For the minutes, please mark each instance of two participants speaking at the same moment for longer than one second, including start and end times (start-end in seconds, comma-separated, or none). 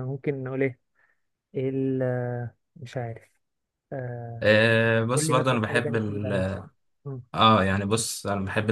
5.1-6.3